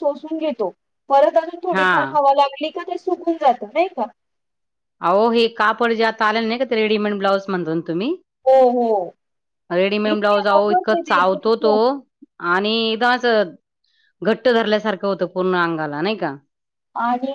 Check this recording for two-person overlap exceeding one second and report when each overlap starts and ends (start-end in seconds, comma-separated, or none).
10.1-11.8